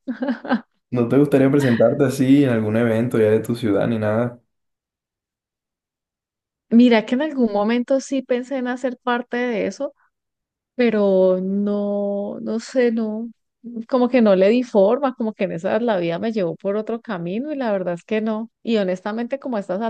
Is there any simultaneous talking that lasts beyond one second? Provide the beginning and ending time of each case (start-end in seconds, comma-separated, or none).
none